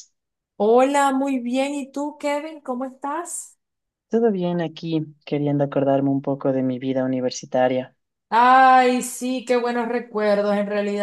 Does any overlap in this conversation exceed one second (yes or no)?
no